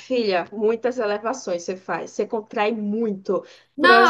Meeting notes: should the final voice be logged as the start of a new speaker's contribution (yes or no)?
yes